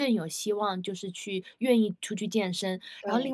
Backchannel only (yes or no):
yes